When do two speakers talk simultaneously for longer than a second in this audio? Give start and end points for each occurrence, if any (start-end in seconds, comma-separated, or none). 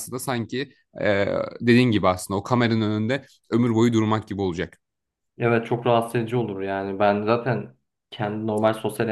none